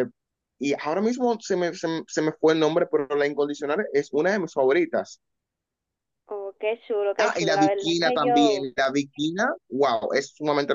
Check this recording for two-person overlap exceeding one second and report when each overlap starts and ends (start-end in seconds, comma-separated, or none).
7.2-8.7